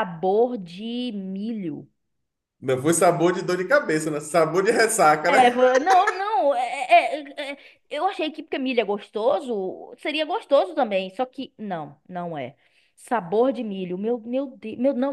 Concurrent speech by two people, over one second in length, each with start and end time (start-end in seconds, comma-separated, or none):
none